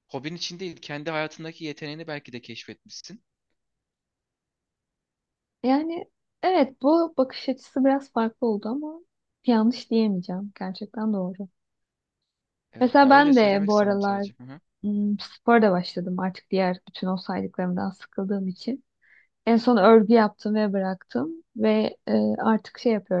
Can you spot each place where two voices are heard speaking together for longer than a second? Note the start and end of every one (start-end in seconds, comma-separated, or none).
12.8-14.3